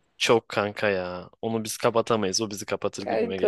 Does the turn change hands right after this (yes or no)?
yes